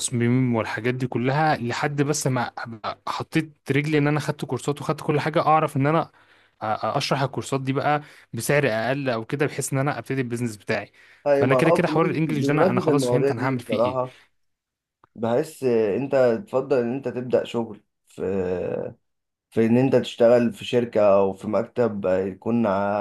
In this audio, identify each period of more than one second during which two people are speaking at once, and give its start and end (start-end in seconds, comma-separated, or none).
11.3-14.0